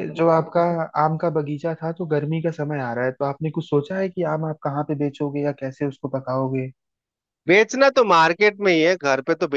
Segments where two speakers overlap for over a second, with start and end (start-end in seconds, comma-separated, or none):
none